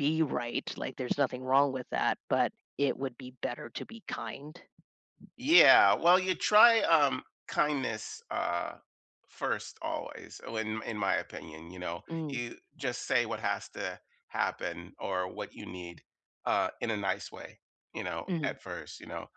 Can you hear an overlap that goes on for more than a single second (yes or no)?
no